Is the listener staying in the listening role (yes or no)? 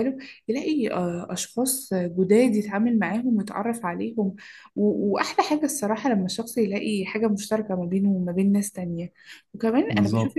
yes